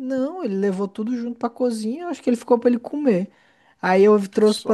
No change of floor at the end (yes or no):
yes